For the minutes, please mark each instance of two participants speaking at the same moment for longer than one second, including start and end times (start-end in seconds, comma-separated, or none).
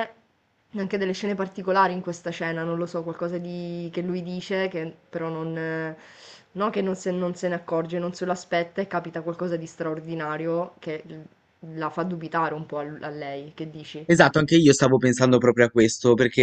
none